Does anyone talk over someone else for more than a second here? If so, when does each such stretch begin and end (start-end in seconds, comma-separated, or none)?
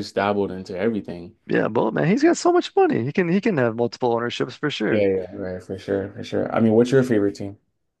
none